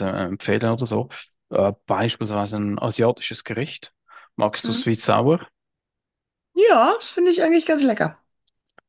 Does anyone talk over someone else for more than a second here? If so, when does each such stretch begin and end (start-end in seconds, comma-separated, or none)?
none